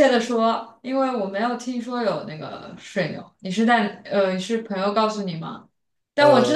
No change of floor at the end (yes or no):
yes